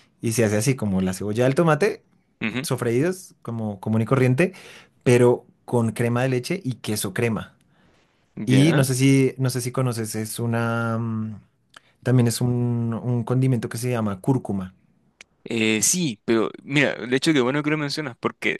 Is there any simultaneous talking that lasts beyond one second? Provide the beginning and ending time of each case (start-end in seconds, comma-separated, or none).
none